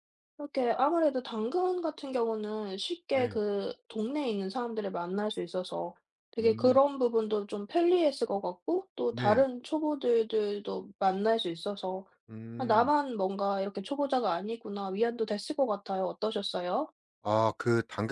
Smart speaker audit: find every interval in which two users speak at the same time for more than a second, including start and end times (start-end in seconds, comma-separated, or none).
none